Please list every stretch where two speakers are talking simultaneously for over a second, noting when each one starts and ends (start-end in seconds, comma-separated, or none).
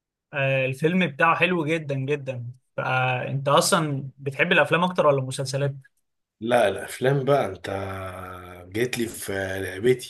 none